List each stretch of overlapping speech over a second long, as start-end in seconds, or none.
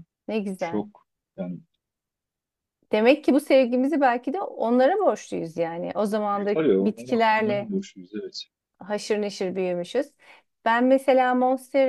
6.4-7.7